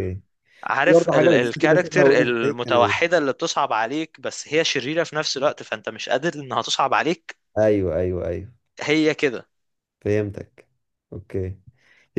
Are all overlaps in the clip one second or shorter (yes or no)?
no